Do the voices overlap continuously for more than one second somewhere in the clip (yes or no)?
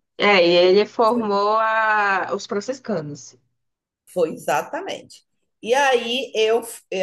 no